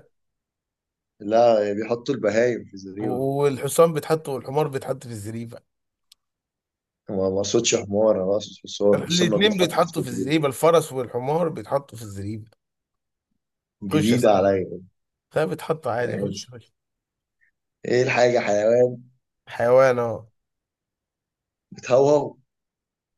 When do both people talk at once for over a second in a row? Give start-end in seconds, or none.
8.9-10.4